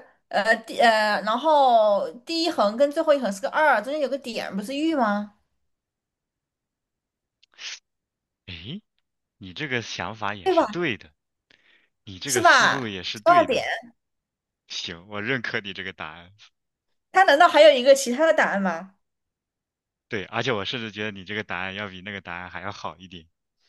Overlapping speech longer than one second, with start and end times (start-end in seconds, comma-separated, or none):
12.2-13.6